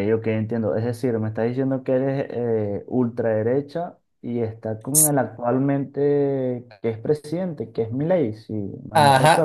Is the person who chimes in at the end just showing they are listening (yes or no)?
no